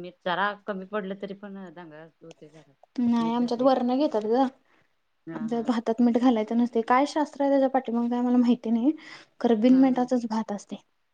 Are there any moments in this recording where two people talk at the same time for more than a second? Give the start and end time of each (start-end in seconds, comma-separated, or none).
none